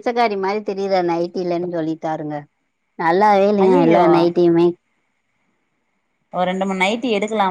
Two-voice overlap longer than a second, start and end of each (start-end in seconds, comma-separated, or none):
none